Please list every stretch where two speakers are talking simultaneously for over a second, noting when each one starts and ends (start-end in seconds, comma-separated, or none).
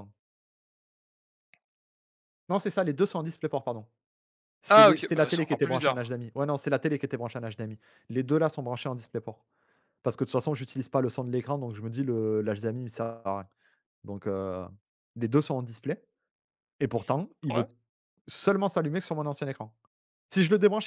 4.7-6.1